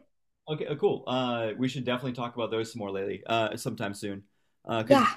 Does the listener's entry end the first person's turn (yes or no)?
no